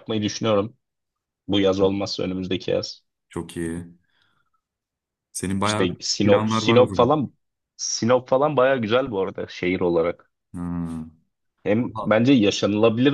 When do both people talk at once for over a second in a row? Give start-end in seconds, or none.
5.6-7.2